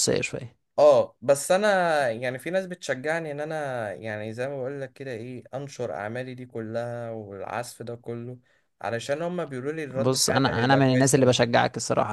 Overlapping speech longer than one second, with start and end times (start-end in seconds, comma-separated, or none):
9.9-11.3